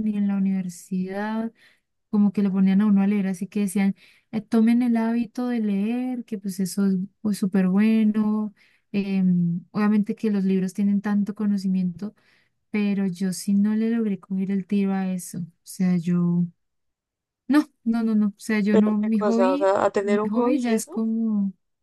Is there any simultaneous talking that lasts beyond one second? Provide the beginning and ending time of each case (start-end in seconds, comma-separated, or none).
18.7-21.0